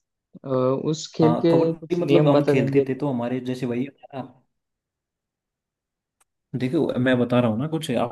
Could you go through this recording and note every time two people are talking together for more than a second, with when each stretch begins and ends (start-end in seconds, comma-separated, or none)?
1.2-2.9